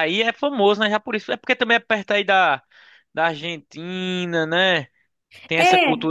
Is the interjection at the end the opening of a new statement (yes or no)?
no